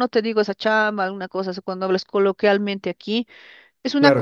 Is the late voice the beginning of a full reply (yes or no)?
no